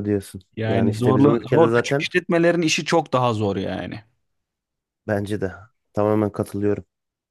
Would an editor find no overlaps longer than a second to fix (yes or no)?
no